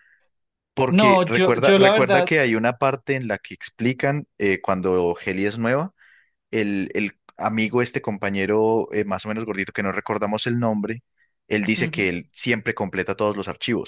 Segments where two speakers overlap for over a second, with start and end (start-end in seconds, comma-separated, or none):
0.9-2.3